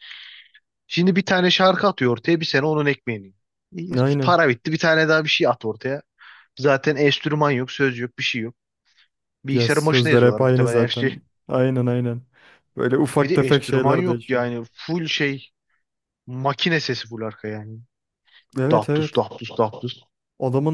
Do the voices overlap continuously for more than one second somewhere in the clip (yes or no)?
yes